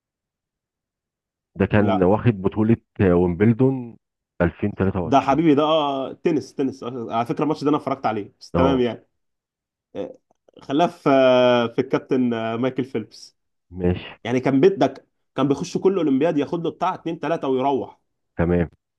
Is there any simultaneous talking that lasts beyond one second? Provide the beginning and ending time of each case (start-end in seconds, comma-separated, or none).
none